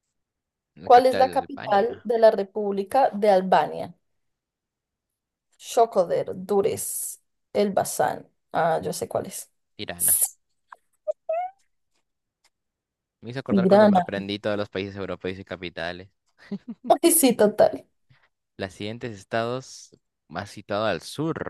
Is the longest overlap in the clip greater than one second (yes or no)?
yes